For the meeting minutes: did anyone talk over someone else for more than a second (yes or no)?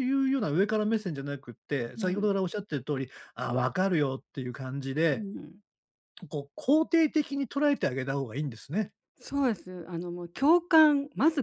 no